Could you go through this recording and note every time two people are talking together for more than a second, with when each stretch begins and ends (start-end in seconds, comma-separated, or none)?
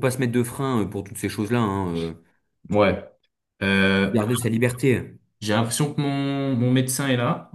none